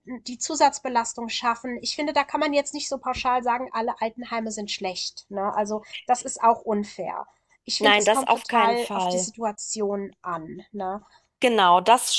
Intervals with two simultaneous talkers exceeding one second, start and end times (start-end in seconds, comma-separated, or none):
7.8-9.3